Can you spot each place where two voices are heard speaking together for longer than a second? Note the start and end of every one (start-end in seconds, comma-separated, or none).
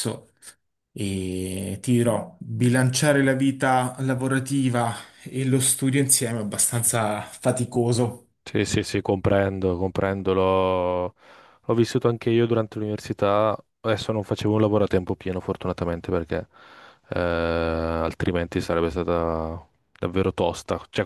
none